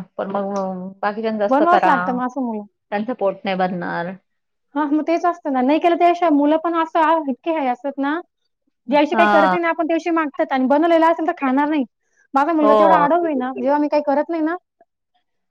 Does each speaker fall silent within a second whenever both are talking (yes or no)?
yes